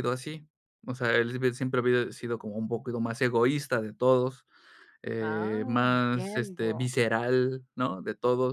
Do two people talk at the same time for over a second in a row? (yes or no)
yes